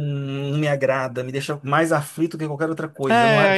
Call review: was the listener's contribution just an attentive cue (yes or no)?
no